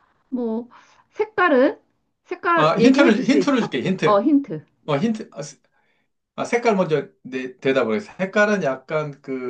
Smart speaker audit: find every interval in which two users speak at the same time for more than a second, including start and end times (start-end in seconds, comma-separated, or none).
2.5-4.2